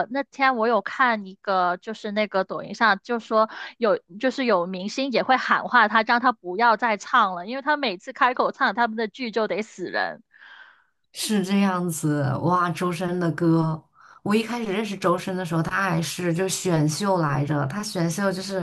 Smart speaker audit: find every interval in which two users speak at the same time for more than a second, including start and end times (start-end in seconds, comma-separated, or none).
none